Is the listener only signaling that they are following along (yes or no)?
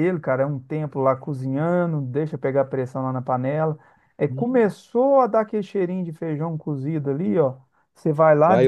yes